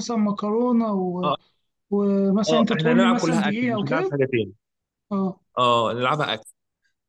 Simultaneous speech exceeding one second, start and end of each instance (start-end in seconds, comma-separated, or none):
2.5-4.2